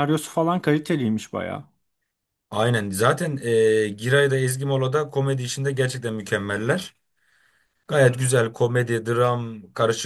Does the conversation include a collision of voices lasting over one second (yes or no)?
no